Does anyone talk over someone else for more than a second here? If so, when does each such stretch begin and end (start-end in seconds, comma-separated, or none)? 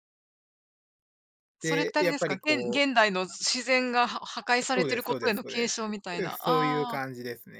1.6-2.9, 4.7-7.0